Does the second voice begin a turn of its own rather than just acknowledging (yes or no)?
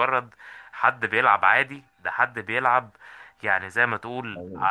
no